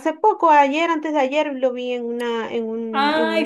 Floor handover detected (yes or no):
yes